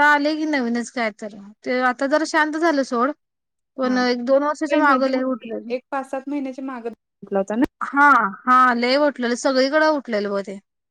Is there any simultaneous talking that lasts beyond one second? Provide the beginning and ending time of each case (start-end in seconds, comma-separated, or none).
3.9-5.1